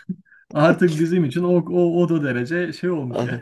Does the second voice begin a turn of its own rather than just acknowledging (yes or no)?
yes